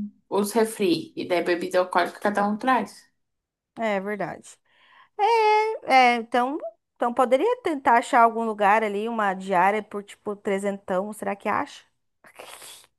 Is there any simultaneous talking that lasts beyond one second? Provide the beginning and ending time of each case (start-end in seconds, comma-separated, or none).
none